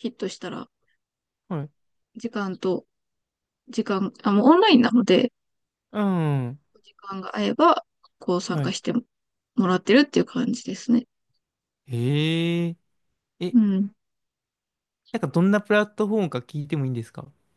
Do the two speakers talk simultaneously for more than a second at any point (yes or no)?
no